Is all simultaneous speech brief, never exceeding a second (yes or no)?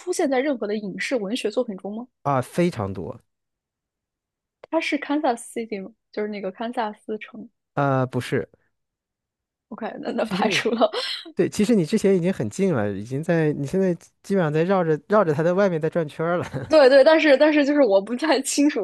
yes